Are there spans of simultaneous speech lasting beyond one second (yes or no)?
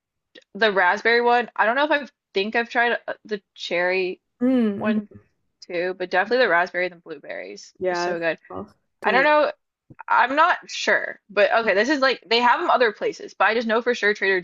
no